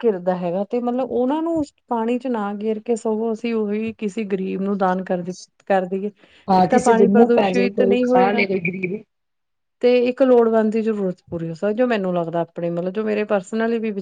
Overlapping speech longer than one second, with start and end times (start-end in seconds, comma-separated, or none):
6.7-8.4